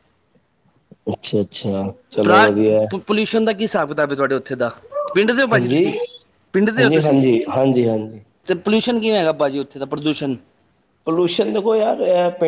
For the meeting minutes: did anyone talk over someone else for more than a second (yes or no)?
no